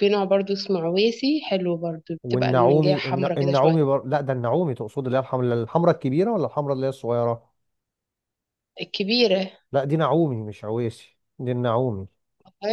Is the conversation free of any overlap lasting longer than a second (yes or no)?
no